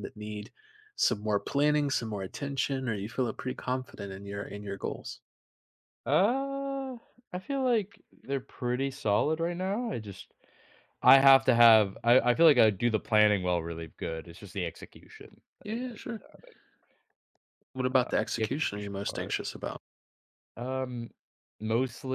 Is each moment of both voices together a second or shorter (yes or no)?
no